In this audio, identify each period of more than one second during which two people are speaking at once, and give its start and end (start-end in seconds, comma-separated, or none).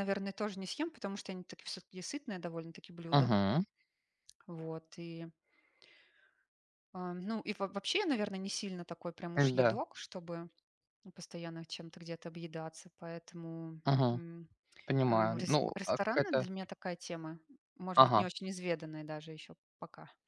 15.1-16.5